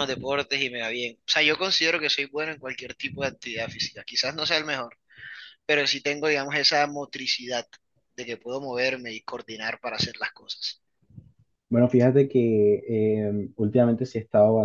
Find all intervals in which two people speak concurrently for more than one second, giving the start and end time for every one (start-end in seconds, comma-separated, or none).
none